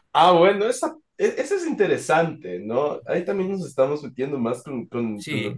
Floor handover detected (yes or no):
yes